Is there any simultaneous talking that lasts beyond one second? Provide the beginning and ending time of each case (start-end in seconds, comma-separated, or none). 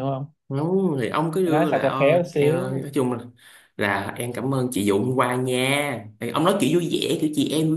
1.4-2.9